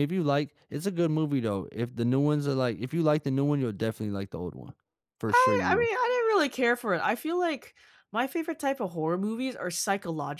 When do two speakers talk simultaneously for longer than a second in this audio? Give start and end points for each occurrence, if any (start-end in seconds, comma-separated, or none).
none